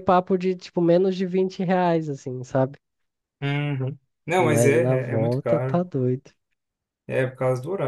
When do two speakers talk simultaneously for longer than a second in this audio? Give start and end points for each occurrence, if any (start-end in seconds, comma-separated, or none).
4.4-5.8